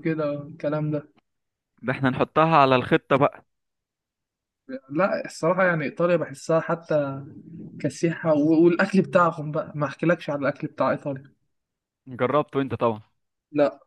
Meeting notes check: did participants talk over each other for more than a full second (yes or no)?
no